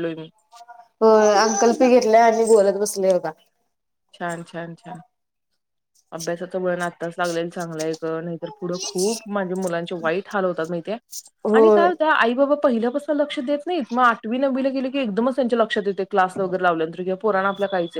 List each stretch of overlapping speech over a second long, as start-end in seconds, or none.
none